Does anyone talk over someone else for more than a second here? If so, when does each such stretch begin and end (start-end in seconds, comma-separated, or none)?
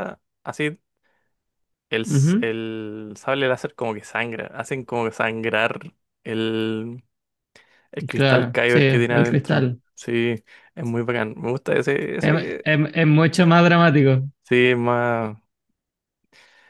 8.1-9.8